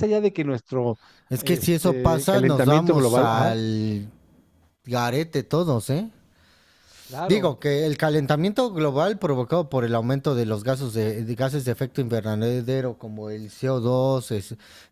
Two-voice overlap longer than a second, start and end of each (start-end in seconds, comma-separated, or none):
1.4-3.5